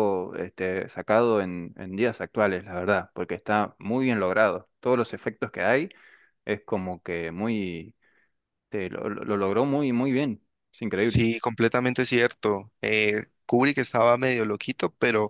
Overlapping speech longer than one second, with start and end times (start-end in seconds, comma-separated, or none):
none